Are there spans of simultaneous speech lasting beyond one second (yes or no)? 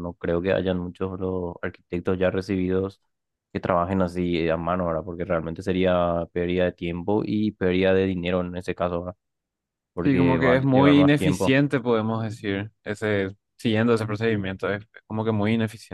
yes